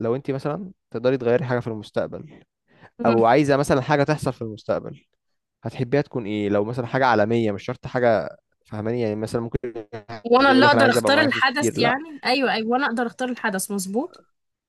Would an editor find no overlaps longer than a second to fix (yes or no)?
no